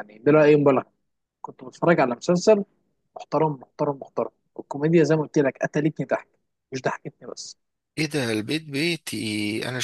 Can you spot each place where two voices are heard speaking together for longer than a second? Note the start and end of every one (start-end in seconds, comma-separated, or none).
none